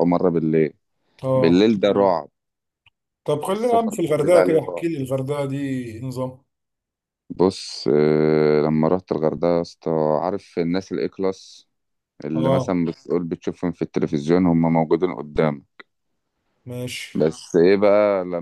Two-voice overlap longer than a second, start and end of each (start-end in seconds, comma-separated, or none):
3.5-4.9